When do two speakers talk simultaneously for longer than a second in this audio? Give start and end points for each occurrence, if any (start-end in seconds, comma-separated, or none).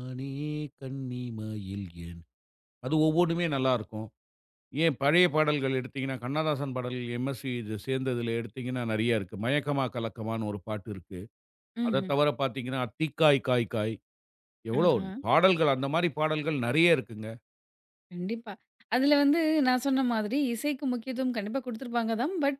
none